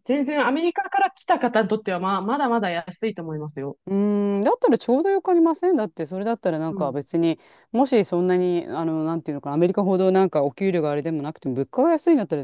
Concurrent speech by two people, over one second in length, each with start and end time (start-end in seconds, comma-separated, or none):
none